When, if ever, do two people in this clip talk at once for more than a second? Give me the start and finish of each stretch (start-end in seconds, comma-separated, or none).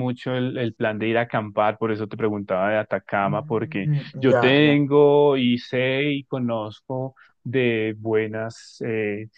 3.2-4.8